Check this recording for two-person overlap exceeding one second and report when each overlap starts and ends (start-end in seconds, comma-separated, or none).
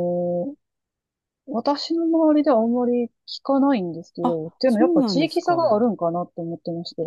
4.2-5.9